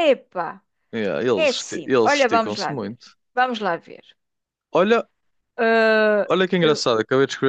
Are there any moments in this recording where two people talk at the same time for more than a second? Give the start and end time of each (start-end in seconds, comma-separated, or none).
1.3-3.0